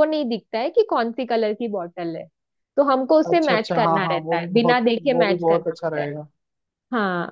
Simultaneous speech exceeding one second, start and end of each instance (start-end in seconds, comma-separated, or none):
3.3-6.1